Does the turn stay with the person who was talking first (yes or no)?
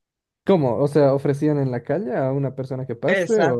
no